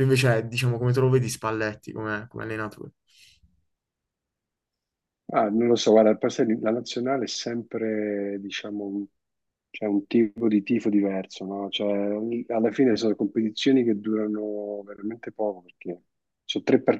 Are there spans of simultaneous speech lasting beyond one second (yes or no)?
no